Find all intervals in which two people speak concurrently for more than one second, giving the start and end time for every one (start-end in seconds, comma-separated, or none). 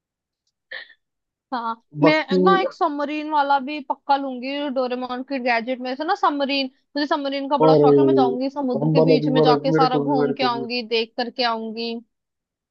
7.6-10.7